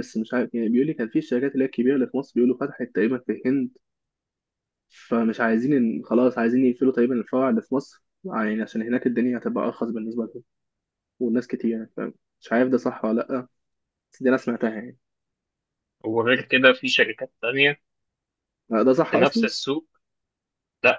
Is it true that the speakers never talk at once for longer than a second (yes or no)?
yes